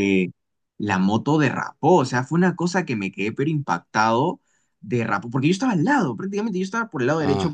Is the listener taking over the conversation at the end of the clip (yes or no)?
no